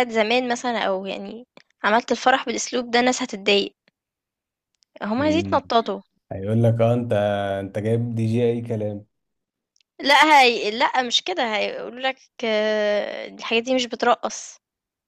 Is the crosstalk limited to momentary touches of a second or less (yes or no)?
yes